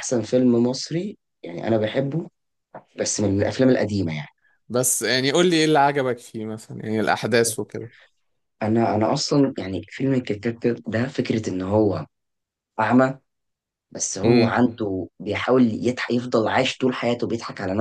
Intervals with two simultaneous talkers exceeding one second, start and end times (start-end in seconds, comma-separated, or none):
none